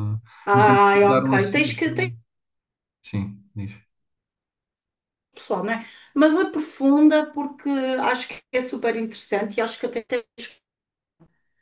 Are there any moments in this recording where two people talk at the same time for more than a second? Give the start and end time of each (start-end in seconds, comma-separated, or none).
0.5-2.1